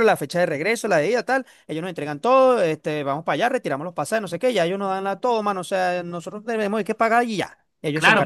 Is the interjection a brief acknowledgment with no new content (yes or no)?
no